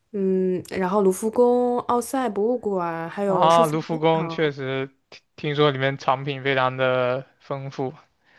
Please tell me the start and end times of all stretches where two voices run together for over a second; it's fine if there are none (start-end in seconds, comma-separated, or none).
3.2-4.5